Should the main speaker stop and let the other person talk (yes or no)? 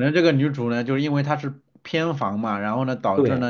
no